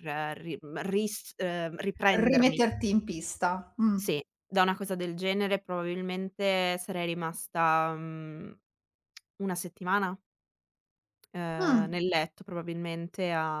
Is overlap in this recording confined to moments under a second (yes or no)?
yes